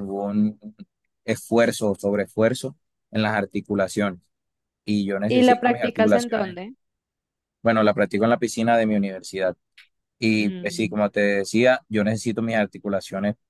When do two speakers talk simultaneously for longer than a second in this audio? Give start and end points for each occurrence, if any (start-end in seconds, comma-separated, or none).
5.3-6.6